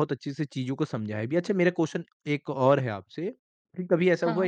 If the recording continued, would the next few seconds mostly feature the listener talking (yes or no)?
no